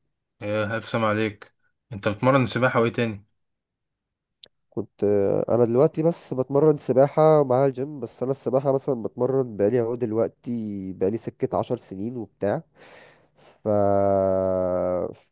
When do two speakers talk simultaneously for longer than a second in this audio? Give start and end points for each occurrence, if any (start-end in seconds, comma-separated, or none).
none